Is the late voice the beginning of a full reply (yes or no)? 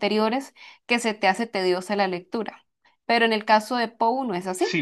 yes